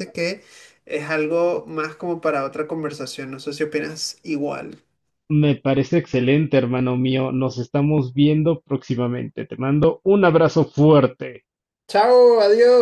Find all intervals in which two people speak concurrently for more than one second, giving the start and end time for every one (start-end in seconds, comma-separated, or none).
none